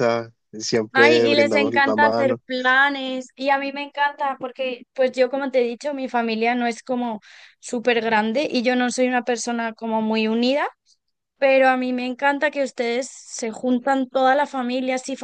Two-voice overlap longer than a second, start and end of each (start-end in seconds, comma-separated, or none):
0.9-2.4